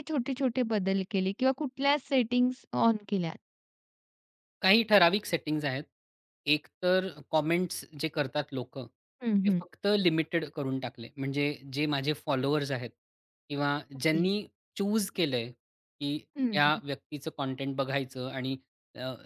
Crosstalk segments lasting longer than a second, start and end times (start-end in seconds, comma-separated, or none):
none